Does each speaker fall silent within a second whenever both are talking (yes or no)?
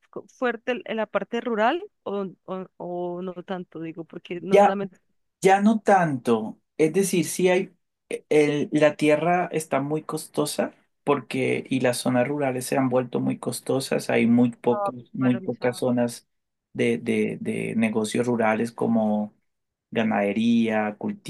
no